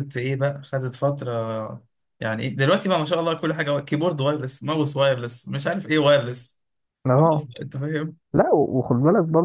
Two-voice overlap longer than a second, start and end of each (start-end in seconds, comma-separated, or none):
none